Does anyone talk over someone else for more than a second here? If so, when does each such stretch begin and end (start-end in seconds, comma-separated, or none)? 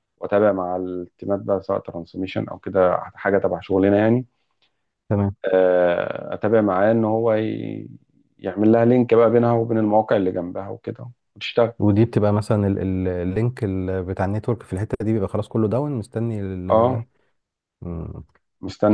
none